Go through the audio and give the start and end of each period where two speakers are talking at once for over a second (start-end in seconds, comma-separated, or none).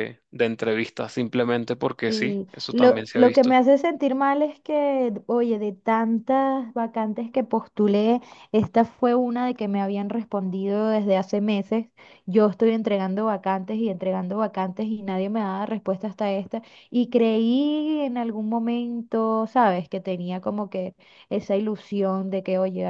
2.1-3.5